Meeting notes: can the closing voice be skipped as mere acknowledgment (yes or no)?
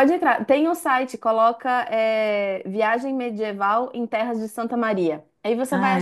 yes